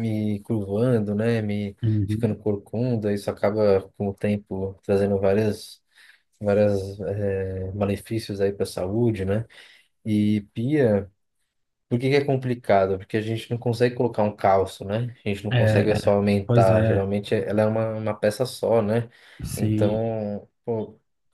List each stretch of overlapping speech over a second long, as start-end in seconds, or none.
15.5-17.1